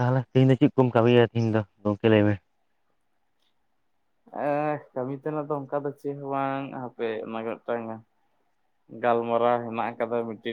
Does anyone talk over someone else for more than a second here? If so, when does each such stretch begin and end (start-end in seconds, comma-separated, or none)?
none